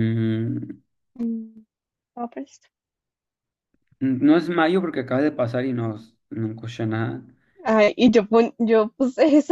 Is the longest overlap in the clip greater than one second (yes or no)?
no